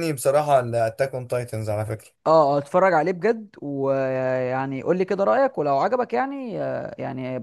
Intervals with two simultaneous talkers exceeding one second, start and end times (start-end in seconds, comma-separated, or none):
none